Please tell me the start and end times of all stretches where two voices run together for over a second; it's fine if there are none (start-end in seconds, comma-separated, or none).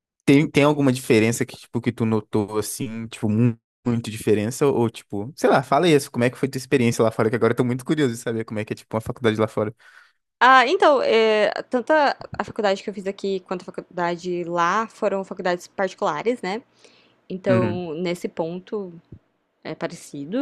none